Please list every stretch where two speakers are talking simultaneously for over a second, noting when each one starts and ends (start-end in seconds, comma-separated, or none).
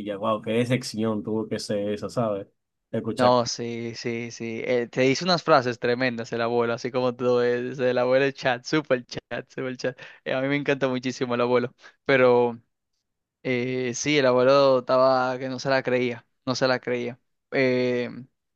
none